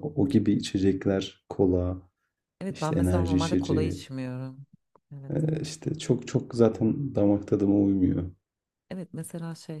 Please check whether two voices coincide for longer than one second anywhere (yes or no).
yes